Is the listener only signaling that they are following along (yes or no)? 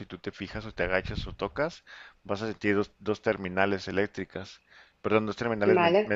yes